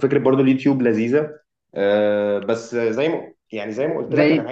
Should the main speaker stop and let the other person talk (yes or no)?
yes